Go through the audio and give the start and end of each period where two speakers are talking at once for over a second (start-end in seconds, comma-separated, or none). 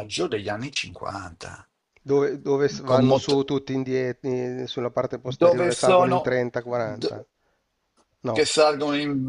5.2-7.2